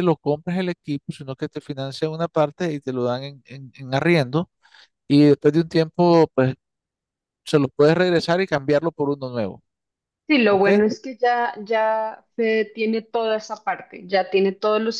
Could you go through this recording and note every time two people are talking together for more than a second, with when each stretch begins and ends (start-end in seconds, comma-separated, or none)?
none